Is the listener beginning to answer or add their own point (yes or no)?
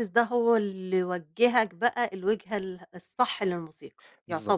yes